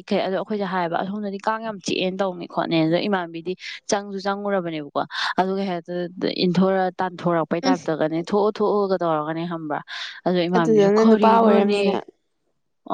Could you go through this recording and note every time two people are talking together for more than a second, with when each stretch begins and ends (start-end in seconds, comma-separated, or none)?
10.6-11.8